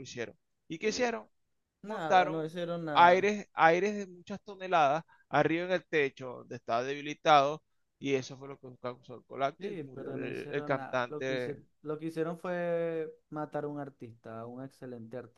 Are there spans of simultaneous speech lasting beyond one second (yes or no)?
yes